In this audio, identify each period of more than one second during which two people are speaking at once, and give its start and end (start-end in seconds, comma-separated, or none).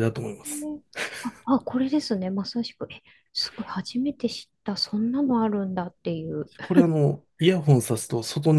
none